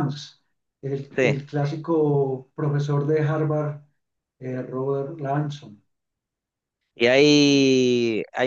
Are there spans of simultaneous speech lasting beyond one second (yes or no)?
no